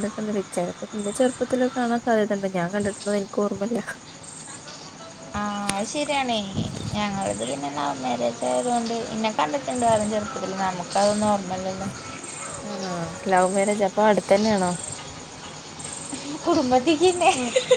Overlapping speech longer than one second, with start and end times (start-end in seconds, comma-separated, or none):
none